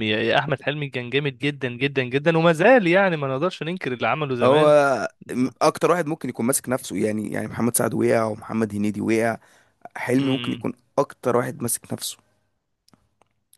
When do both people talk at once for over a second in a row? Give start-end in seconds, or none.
none